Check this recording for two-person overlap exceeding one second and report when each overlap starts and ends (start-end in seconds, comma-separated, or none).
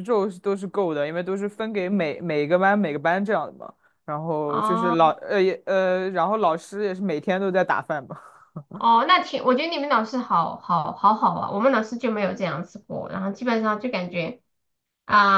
none